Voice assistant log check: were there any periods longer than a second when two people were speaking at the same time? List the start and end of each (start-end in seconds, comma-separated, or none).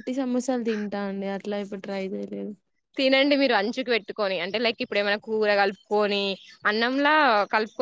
none